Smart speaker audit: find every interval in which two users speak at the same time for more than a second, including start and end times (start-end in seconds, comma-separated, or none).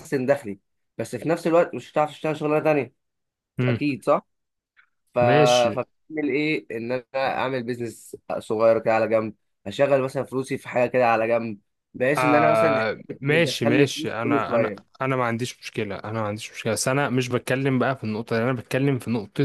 12.2-15.0